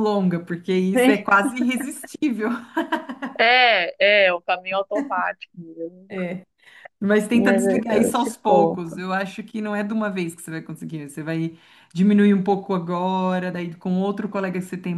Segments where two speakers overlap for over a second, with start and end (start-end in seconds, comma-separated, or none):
7.3-9.0